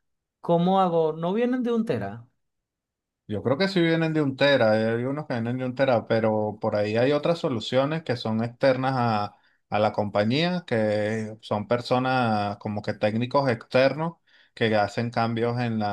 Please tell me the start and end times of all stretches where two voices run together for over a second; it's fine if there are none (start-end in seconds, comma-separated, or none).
none